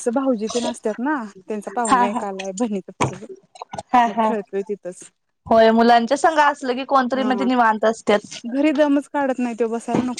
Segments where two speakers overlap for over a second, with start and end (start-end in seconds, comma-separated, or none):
none